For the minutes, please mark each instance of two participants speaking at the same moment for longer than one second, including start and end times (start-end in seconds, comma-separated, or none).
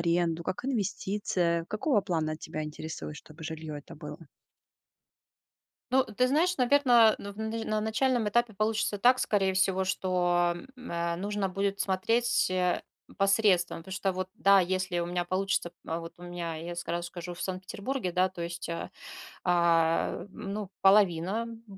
none